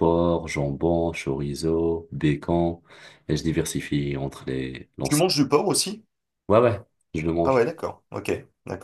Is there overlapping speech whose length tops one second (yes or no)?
no